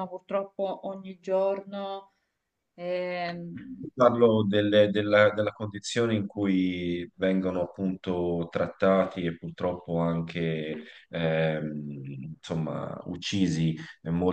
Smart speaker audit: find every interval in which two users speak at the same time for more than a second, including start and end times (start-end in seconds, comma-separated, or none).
none